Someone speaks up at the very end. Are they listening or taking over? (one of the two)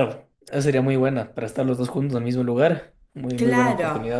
taking over